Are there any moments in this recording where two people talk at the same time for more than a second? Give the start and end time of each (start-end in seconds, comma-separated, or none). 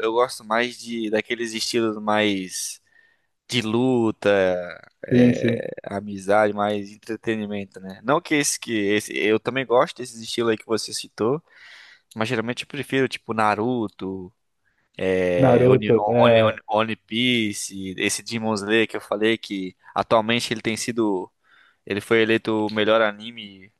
15.4-16.6